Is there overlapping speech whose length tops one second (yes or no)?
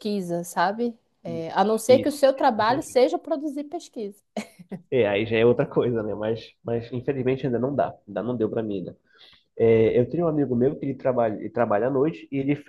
yes